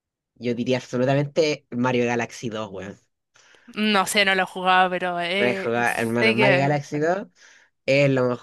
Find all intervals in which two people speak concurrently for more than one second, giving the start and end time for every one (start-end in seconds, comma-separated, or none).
5.4-7.1